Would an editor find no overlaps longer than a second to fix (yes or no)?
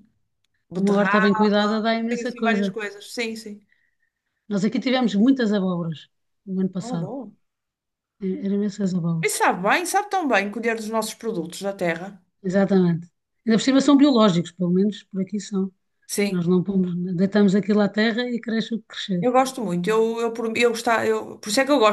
no